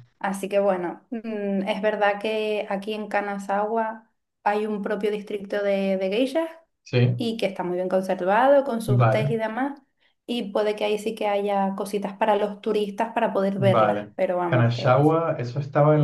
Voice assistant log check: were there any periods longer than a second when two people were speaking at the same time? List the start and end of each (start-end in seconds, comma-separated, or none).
13.6-15.0